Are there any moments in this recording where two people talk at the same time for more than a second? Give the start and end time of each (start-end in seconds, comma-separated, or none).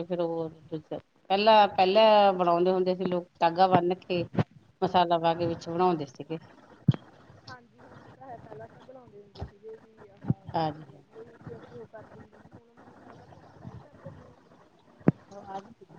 none